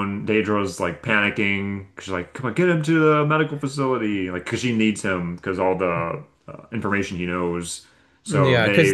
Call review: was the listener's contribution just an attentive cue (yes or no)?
yes